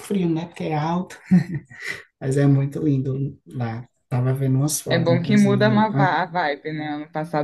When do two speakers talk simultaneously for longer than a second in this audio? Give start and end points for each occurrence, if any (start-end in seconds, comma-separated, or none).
4.9-6.1